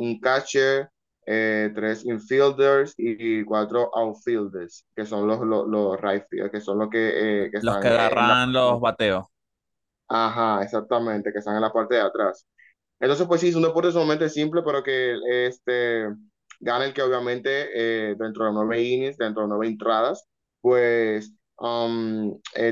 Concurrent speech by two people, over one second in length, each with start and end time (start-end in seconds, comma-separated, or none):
7.6-9.0